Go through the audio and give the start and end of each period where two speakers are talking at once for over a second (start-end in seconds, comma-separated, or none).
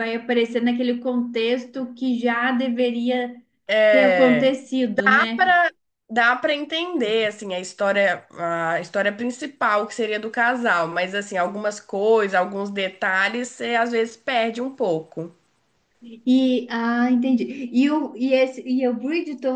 3.9-5.5